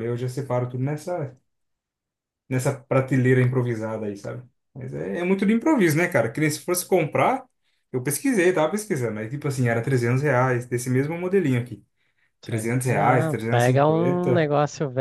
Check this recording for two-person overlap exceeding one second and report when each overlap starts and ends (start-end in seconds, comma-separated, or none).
12.4-14.5